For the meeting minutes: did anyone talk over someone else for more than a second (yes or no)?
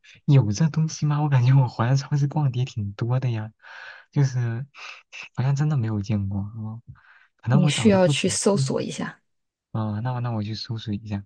yes